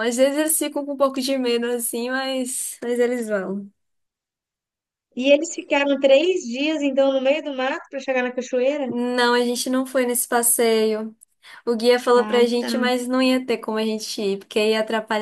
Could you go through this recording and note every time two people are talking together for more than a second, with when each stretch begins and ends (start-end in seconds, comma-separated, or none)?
none